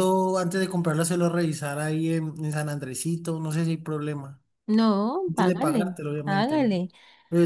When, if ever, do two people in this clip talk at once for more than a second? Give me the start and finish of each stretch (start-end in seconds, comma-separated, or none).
5.3-6.8